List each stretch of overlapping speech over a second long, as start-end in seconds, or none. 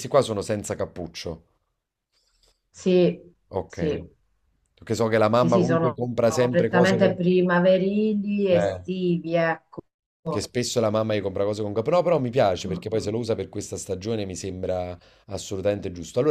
5.3-7.2